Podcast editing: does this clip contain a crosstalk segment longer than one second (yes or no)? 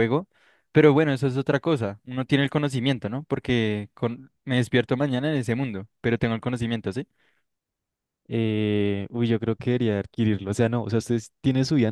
no